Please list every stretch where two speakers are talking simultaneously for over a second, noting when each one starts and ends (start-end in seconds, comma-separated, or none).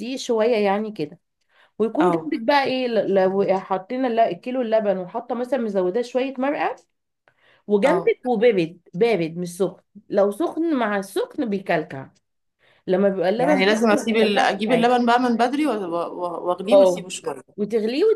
13.4-14.9